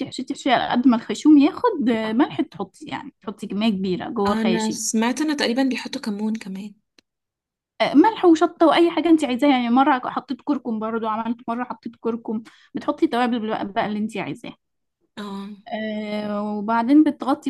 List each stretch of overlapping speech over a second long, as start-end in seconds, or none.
none